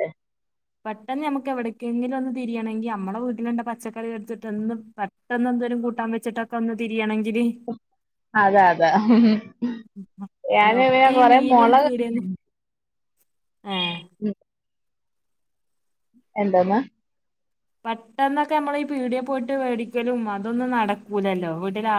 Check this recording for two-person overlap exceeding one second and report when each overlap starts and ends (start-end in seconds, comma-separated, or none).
10.6-12.2